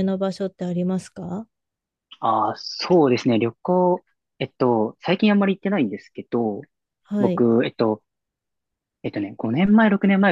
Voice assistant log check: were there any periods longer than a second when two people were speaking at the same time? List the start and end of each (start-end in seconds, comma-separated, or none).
none